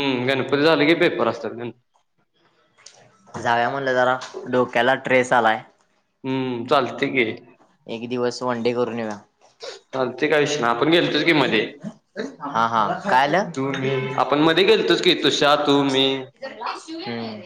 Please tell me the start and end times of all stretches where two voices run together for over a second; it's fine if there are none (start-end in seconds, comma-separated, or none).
none